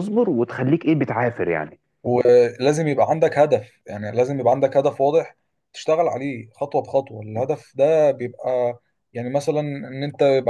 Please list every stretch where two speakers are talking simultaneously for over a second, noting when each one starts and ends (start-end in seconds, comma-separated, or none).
none